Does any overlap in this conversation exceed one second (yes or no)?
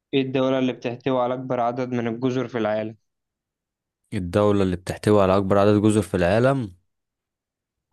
no